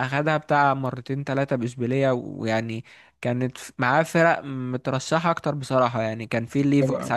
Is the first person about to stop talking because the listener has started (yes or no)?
no